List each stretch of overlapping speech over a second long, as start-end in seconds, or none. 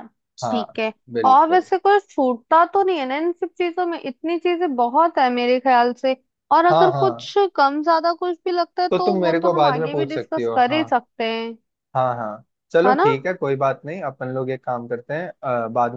8.9-10.8